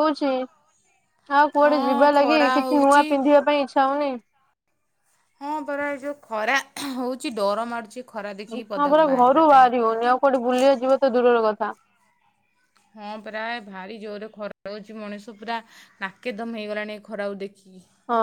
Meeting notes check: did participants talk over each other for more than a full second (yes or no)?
yes